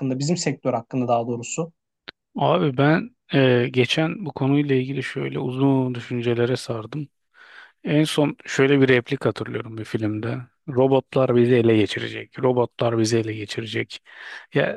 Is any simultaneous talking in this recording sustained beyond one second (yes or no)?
no